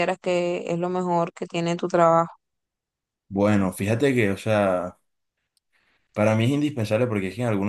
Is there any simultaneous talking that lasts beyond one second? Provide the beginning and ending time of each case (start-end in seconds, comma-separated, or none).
none